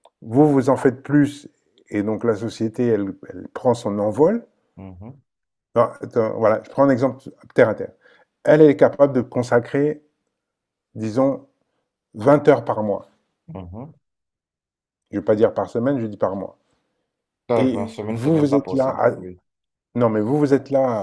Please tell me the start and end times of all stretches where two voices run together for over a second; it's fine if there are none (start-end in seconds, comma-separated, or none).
17.6-19.1